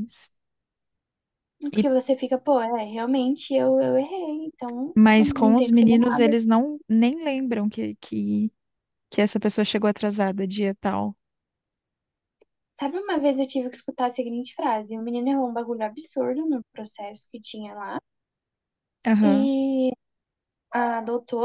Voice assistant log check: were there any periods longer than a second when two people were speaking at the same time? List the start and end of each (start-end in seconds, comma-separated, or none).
5.0-6.3